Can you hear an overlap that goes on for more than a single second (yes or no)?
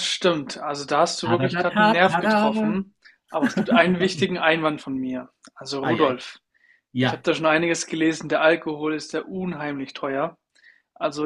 yes